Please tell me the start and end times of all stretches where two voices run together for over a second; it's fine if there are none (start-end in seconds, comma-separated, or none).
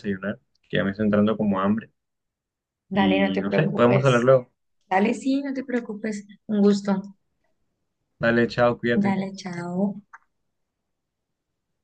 2.9-4.3